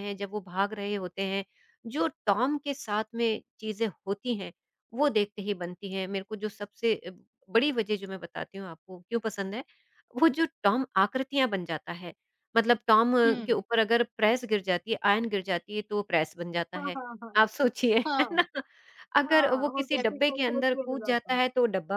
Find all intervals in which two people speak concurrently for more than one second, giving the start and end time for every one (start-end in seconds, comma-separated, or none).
19.3-21.4